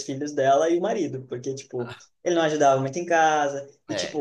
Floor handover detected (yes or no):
no